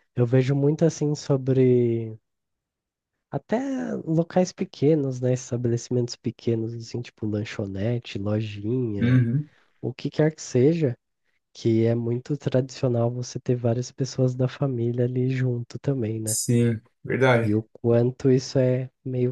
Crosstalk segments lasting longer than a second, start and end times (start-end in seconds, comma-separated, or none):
none